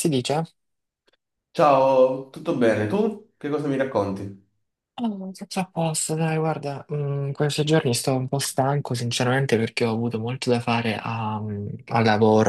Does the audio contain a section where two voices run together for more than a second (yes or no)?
no